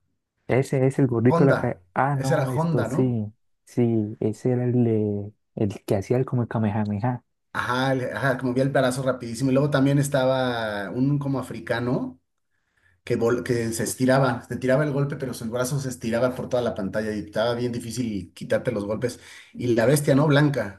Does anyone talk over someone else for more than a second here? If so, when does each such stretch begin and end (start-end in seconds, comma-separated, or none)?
1.3-3.2